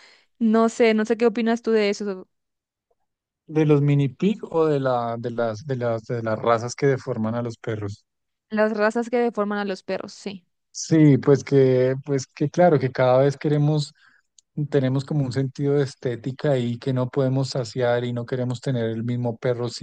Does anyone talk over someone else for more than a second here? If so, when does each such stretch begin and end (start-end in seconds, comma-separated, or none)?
none